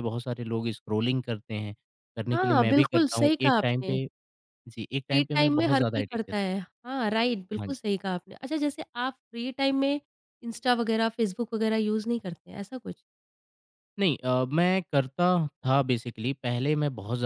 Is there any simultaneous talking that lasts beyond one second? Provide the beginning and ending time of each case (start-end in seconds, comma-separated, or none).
2.3-4.0, 5.1-6.5